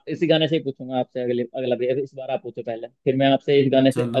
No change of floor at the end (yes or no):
yes